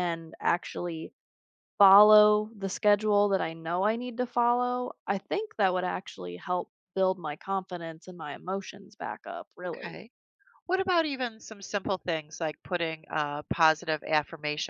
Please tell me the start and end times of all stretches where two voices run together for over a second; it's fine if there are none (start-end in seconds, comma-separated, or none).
none